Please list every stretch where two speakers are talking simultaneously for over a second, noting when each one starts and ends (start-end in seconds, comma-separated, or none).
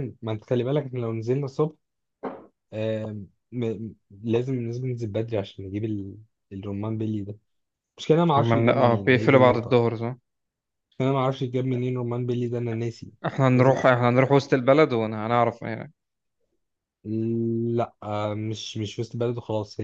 8.4-9.8